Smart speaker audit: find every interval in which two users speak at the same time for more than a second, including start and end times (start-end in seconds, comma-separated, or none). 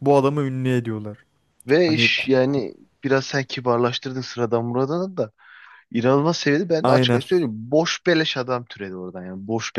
none